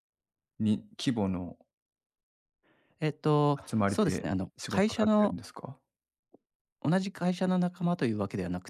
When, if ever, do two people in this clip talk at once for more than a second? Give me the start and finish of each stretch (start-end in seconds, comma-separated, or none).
3.7-5.4